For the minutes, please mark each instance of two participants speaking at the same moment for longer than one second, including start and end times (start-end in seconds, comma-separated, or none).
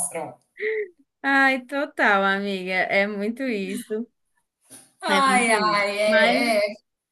5.1-6.5